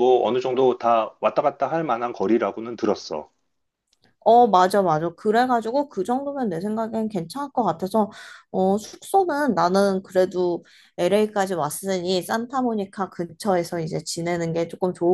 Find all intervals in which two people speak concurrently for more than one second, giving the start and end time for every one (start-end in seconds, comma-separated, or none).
none